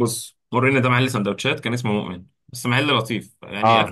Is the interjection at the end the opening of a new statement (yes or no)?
no